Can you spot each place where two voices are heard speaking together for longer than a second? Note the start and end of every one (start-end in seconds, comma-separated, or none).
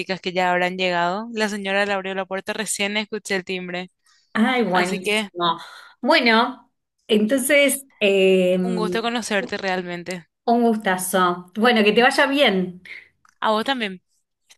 none